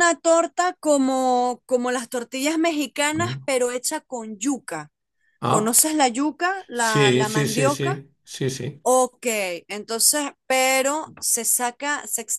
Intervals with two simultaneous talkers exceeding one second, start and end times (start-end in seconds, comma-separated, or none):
6.7-7.9